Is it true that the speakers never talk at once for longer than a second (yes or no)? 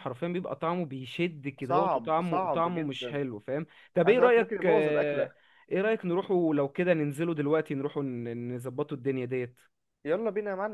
no